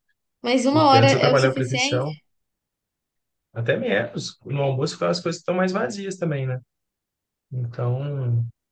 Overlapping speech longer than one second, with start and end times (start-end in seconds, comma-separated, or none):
0.7-2.1